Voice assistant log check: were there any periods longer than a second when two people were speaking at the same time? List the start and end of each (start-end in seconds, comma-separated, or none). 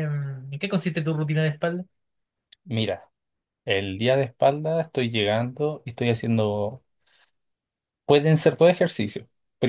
none